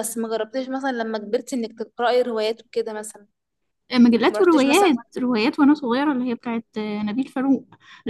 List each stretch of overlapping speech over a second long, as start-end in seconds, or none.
none